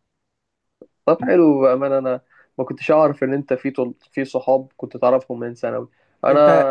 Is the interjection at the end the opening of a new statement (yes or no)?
no